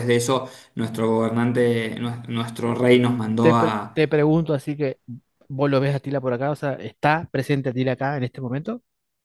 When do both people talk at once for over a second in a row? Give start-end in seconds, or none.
none